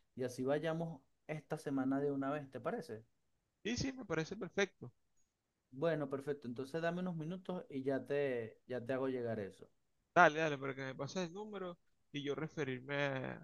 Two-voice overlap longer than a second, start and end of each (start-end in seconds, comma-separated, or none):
none